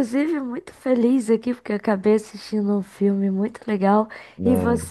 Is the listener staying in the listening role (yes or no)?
yes